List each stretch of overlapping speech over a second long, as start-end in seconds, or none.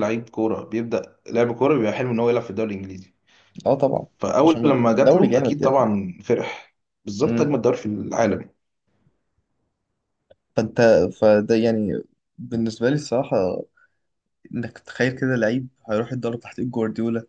4.4-5.9